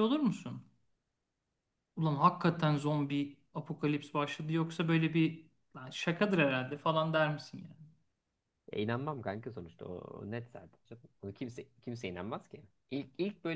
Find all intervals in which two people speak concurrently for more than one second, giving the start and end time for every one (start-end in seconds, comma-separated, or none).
none